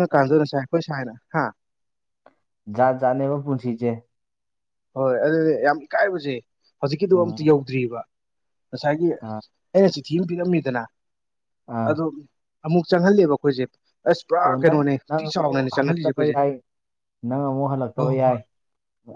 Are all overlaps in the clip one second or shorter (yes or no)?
no